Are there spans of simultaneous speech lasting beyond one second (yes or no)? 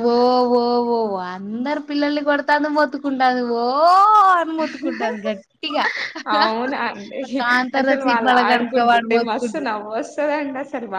yes